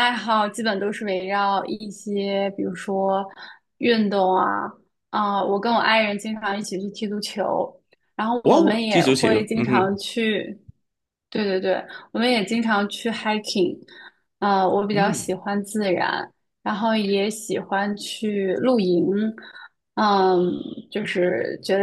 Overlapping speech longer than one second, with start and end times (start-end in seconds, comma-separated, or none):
8.4-9.9